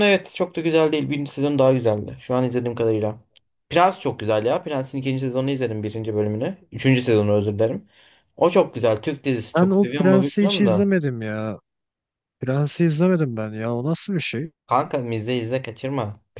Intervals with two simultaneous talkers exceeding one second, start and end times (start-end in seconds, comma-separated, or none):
9.6-10.9